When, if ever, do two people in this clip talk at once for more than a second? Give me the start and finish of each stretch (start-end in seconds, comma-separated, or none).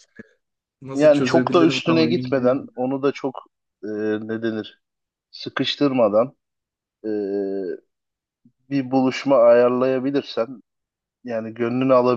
0.9-2.7